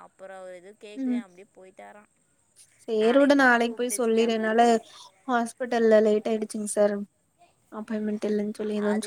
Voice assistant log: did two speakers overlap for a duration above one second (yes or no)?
no